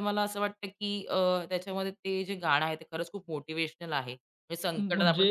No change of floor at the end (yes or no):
yes